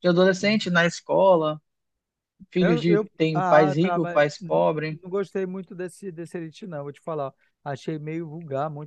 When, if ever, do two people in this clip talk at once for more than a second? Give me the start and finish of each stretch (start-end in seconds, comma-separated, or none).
2.6-5.0